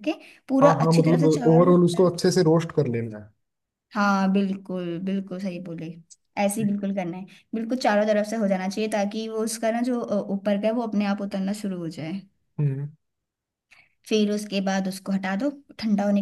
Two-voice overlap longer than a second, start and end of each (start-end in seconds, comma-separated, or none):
0.6-2.1